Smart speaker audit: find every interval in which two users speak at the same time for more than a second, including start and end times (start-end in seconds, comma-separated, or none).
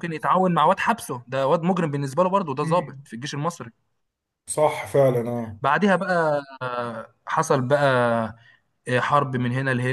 none